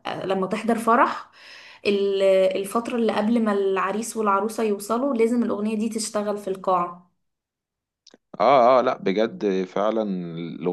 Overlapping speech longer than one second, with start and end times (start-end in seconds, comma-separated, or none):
none